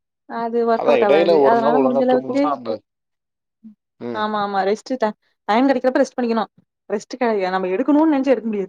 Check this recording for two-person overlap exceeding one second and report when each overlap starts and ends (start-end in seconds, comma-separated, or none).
0.8-2.4